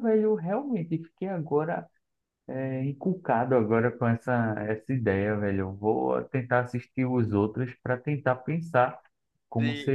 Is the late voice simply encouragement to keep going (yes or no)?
no